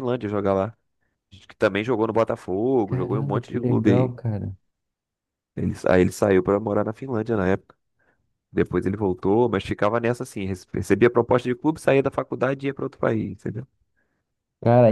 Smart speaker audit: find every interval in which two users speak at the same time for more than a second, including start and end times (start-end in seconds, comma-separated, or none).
2.9-4.1